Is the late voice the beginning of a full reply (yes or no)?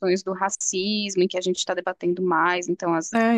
yes